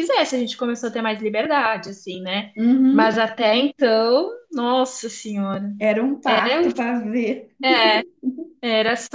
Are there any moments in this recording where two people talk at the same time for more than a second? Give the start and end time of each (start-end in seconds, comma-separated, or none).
none